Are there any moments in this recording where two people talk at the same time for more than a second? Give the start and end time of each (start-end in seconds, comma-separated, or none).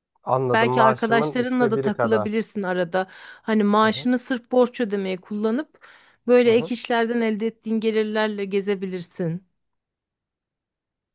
0.5-2.4